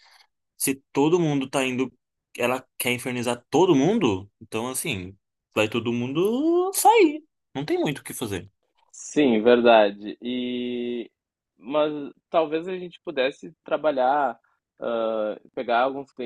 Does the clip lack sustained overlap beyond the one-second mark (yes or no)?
yes